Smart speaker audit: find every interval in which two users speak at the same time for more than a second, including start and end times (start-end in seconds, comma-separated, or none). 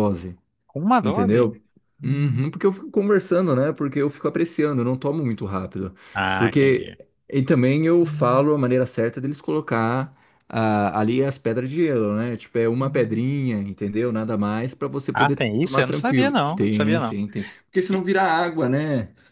15.1-17.2